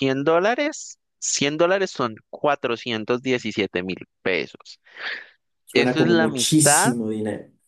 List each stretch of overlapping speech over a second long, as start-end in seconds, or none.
5.7-6.9